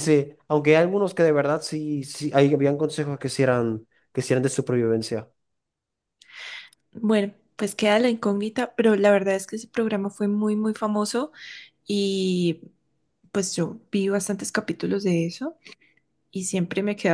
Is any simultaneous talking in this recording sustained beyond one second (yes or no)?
no